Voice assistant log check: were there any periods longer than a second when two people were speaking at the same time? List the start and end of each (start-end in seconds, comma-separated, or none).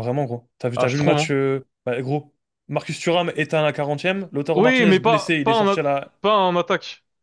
4.5-5.8